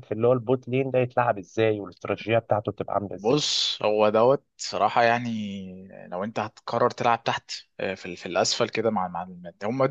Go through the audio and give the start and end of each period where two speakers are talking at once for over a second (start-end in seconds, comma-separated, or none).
none